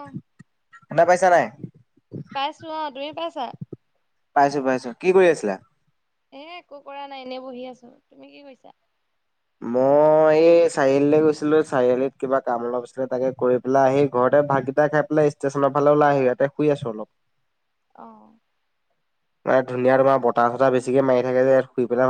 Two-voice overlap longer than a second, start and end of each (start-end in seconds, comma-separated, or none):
none